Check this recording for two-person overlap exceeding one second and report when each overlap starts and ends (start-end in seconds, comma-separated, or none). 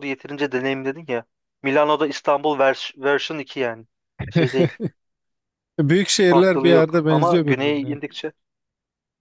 6.3-8.0